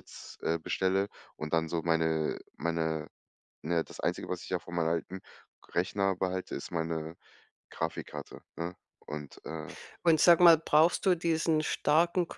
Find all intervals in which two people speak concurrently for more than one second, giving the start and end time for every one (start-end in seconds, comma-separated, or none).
none